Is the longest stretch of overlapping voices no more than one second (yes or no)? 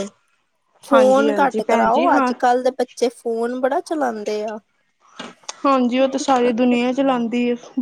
no